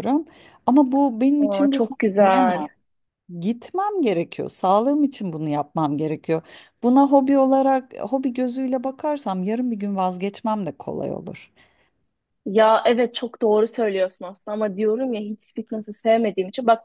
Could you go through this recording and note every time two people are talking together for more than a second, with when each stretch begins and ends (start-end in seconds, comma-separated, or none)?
1.4-2.6